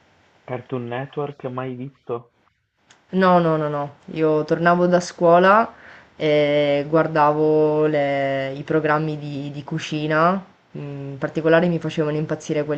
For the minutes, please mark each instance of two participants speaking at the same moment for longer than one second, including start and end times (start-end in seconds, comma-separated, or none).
none